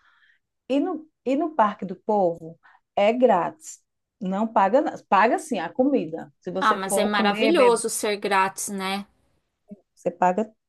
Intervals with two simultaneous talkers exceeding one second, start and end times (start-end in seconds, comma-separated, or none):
6.6-7.8